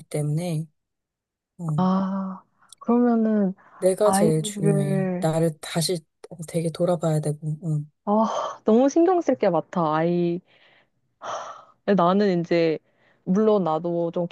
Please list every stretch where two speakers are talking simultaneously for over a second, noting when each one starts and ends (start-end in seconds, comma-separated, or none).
4.0-5.3